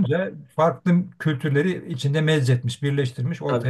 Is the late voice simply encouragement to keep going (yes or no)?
no